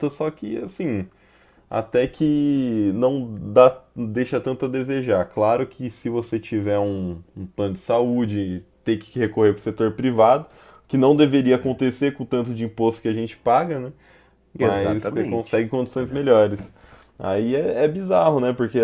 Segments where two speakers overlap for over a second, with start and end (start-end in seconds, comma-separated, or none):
14.6-16.2